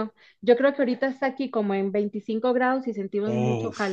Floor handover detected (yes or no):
yes